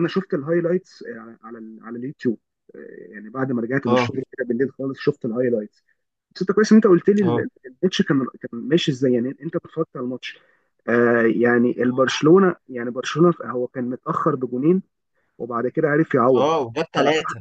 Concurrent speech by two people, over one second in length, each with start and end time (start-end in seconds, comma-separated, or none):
none